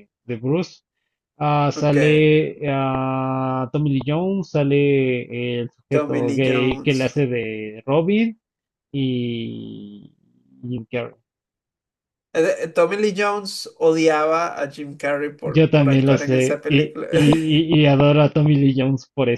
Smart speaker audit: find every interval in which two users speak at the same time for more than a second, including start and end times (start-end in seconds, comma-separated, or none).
5.9-7.2, 15.4-17.1